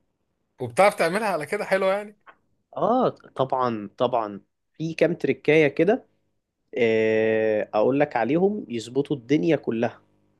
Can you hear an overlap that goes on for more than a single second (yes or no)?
no